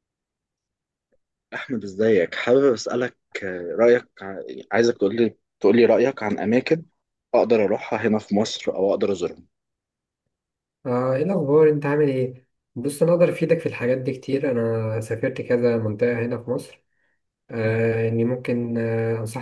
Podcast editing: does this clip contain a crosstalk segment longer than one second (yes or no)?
no